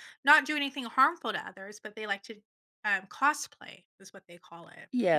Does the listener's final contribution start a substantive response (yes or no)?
yes